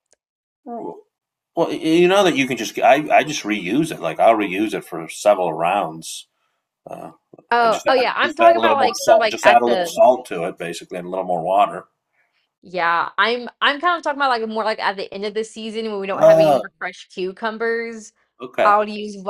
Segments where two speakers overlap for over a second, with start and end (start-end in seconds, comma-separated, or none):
7.6-10.0